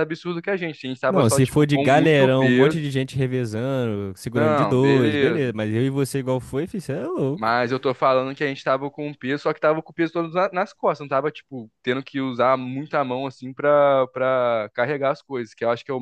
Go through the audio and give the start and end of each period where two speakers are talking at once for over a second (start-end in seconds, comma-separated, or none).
1.1-2.8, 4.3-5.6